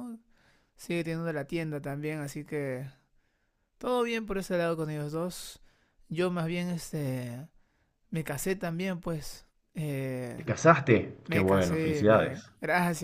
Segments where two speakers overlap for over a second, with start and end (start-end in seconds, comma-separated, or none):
11.2-12.5